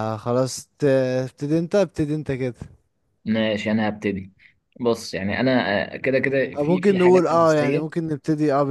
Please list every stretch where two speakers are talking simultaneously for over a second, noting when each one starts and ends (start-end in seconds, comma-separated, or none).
6.5-8.0